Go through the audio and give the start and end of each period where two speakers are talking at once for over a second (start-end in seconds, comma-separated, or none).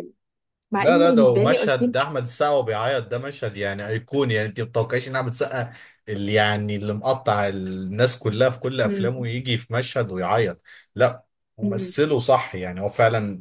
0.8-2.1